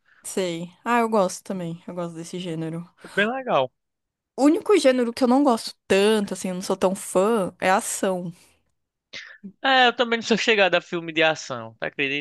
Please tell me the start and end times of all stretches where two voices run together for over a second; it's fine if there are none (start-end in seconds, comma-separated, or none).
none